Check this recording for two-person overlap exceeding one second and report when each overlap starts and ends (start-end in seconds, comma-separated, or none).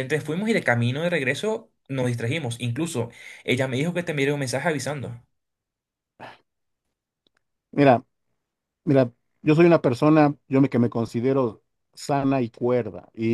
none